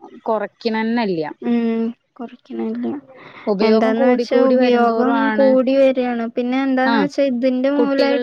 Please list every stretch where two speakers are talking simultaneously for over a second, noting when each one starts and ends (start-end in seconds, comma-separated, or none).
3.7-5.5